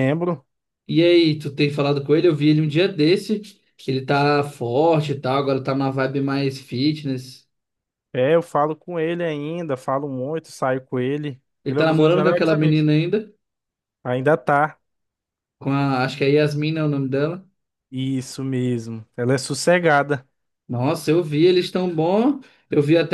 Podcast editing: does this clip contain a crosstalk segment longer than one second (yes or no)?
yes